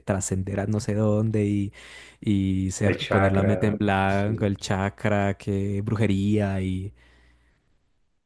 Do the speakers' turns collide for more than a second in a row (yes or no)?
yes